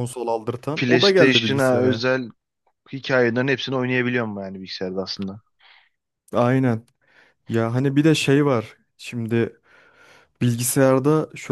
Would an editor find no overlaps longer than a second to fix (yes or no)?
no